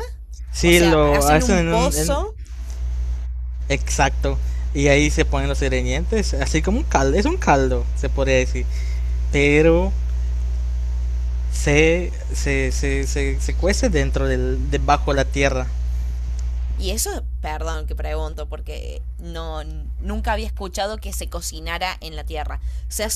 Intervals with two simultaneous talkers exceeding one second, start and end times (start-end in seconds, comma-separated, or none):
0.6-2.3